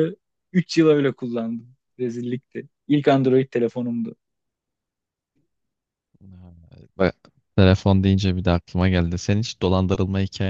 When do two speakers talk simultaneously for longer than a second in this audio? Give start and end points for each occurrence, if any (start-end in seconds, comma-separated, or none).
none